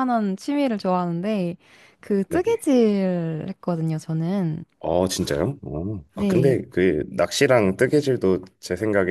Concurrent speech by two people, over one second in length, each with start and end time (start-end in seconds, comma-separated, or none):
none